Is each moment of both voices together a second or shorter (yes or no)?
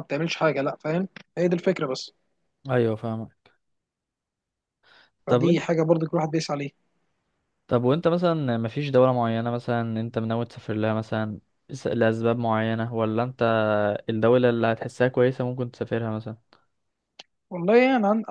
yes